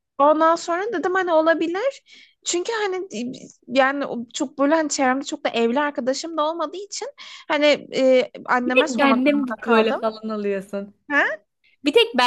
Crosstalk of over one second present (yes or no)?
yes